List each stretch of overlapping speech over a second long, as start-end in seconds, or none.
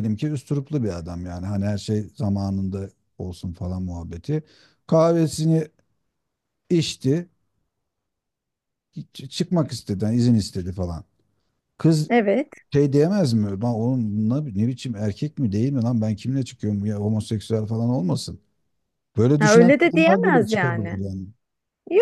19.4-21.0